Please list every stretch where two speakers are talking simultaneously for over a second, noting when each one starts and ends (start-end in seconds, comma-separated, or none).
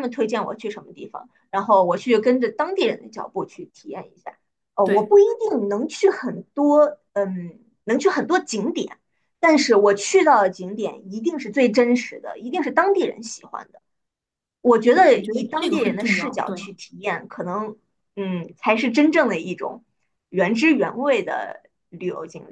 14.9-16.7